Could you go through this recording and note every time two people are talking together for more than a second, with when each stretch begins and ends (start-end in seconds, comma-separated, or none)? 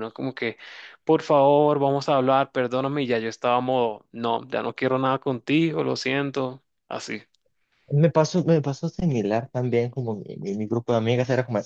none